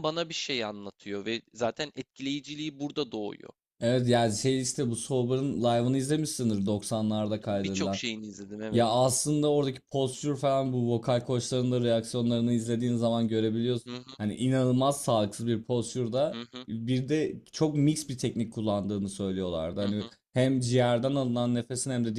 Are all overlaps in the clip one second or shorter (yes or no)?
yes